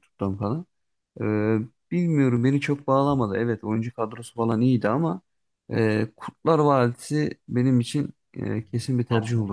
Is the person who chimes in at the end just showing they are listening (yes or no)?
yes